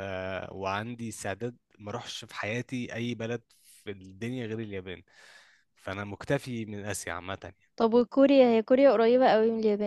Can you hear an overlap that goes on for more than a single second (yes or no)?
no